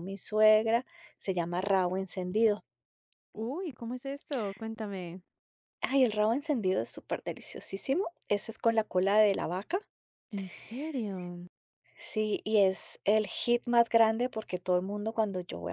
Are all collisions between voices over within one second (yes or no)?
yes